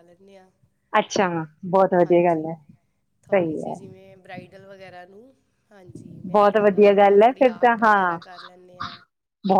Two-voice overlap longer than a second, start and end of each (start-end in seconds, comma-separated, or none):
6.4-8.2